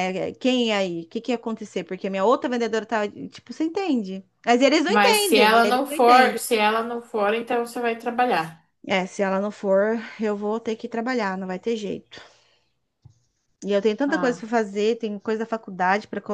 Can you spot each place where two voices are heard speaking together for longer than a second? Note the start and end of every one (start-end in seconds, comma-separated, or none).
4.8-6.4